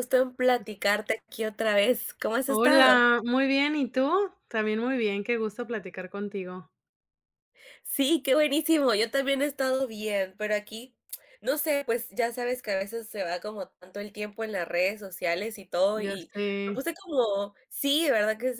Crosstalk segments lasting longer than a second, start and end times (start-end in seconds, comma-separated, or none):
none